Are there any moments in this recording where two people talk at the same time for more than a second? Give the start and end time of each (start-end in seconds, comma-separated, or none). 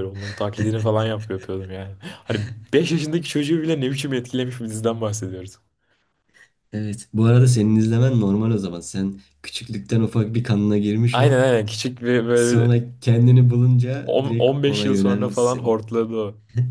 14.0-15.8